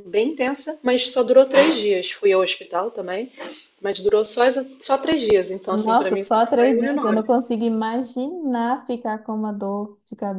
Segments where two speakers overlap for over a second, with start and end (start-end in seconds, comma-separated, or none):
5.7-7.3